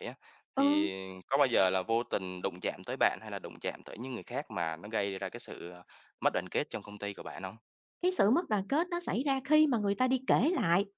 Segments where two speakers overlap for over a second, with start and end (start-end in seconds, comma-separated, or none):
none